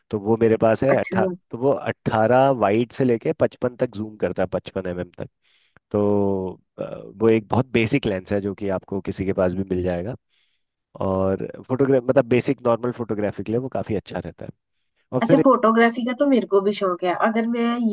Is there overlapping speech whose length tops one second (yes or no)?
no